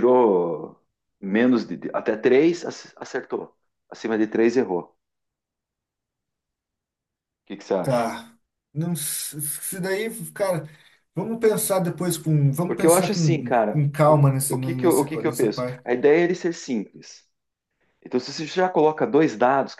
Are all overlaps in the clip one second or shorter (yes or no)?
no